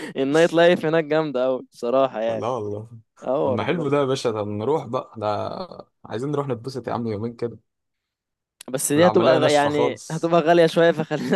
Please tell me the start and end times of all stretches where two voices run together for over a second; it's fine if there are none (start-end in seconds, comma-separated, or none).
9.0-10.3